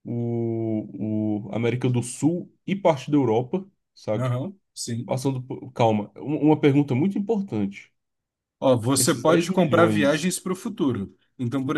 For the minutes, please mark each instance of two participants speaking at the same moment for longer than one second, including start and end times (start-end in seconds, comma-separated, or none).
8.9-10.3